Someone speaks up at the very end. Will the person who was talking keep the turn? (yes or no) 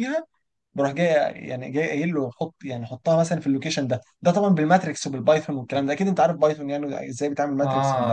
no